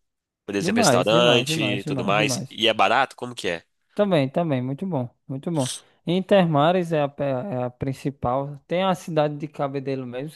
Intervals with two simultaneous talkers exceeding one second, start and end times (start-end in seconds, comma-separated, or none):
0.6-2.6